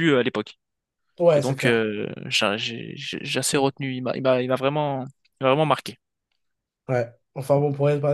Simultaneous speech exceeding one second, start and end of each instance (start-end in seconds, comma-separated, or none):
none